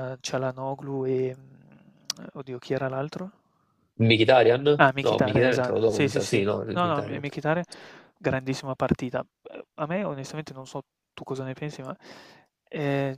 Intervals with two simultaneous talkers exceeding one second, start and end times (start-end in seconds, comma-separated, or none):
5.0-7.2